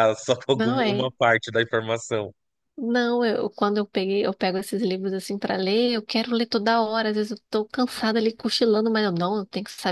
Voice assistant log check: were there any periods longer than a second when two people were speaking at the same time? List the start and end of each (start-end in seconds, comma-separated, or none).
none